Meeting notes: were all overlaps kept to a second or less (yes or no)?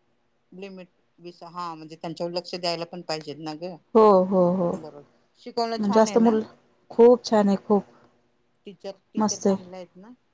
no